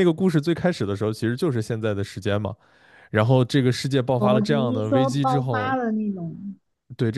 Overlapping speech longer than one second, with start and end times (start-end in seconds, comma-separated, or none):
4.2-5.8